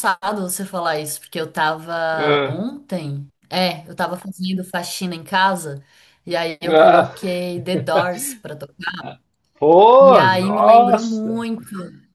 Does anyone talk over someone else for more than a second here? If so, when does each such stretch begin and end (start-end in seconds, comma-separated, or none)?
10.0-11.4